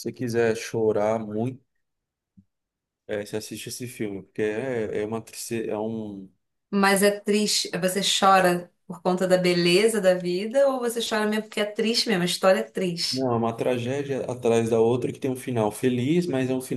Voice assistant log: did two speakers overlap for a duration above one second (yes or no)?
no